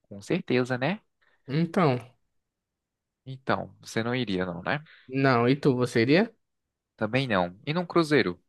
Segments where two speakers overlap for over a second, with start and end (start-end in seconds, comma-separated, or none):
none